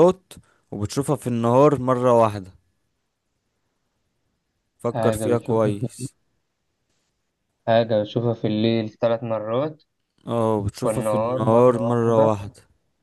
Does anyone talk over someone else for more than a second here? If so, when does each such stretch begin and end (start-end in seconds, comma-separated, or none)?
4.9-6.1, 10.8-12.3